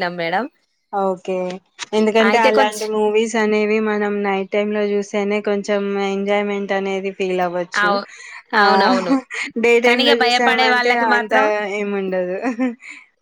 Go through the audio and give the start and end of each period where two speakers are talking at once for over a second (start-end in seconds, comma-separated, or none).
9.9-11.3